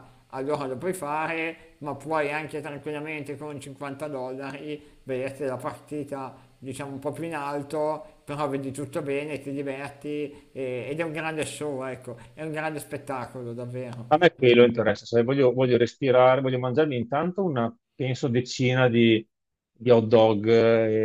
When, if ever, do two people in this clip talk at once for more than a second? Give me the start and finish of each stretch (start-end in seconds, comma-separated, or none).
none